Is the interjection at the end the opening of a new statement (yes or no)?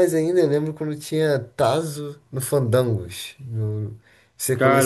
yes